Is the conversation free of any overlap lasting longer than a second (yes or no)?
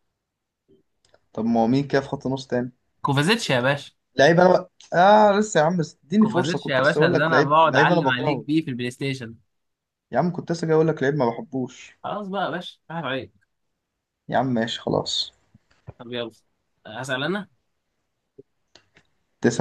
no